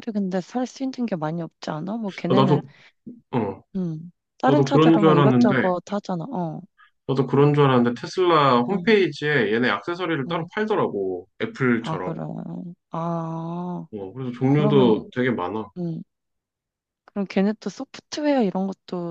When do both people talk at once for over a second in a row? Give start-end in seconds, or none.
4.5-5.7